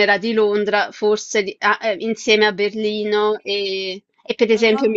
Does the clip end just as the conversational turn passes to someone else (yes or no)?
no